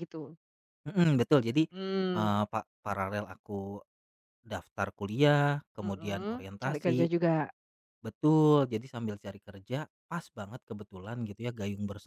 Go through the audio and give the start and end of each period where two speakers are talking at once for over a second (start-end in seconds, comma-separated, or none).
5.8-7.1